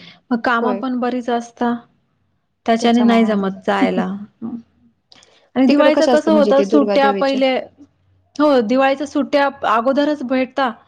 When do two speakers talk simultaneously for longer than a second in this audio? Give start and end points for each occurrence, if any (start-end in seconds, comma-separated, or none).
5.7-7.4